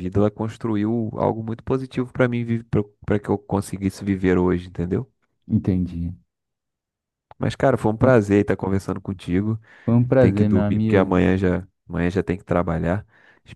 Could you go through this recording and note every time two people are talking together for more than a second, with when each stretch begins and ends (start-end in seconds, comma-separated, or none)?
10.0-11.2